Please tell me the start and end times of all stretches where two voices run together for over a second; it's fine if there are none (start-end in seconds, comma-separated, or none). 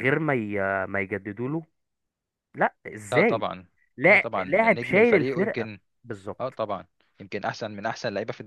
4.1-5.7